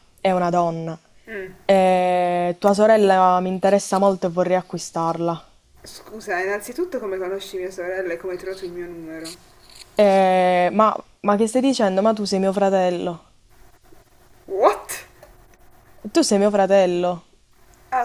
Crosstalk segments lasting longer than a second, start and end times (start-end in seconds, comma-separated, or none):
none